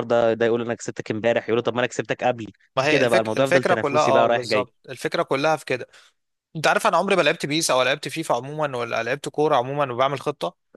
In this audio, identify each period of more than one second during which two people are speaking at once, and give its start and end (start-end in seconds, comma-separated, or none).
2.9-4.7